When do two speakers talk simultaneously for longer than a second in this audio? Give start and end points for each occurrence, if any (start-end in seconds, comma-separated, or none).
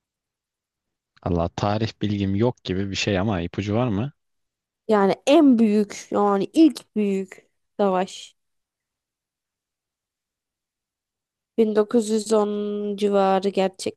none